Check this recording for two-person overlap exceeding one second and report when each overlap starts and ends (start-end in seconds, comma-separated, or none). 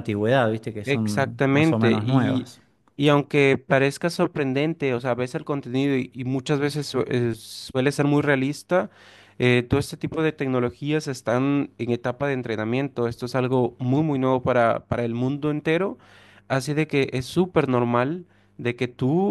0.8-2.5